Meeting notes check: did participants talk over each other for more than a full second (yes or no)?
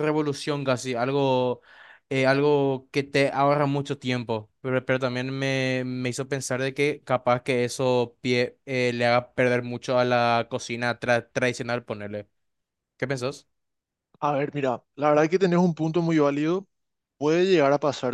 no